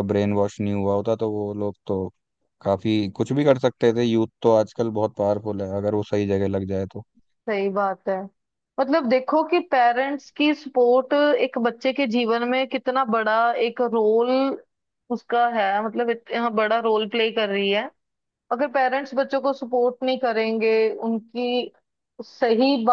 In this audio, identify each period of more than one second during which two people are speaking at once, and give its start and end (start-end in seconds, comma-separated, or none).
none